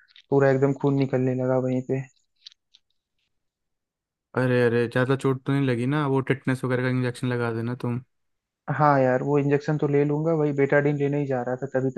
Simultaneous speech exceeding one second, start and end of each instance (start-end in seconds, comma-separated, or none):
none